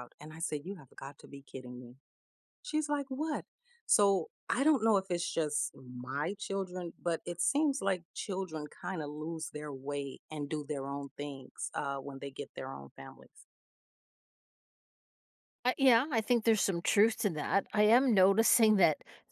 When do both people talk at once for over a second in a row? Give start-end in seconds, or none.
none